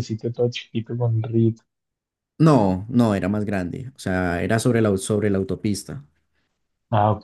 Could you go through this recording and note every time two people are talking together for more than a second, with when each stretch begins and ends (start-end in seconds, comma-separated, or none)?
none